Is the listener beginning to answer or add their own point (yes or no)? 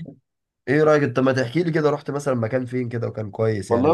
yes